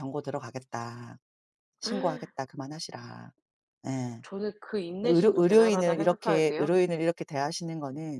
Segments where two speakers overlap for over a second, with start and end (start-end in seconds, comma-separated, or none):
5.1-6.7